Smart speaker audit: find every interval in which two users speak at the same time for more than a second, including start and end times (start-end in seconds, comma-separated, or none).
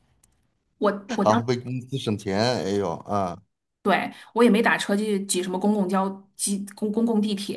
none